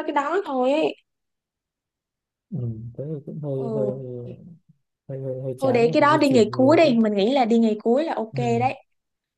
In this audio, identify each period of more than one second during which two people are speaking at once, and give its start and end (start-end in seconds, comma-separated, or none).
5.6-6.9